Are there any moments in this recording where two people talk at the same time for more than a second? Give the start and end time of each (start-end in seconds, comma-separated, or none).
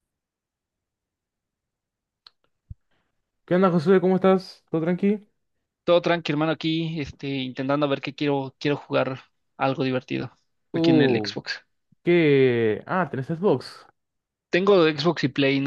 none